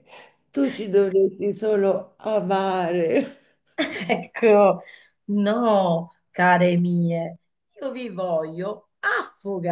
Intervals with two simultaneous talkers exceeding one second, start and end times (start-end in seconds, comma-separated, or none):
none